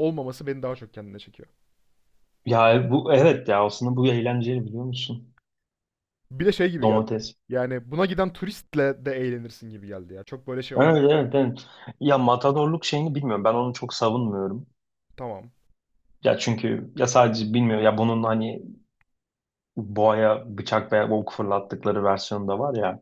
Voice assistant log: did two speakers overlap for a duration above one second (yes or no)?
no